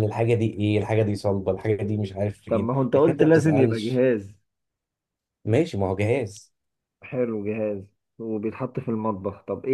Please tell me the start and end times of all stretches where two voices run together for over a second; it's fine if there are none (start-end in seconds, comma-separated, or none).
2.5-4.0